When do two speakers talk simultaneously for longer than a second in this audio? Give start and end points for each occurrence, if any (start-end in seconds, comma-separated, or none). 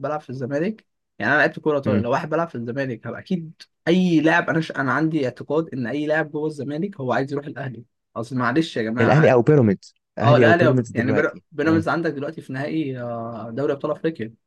10.2-11.8